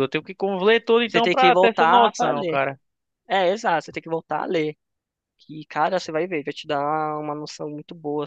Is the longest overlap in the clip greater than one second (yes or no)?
yes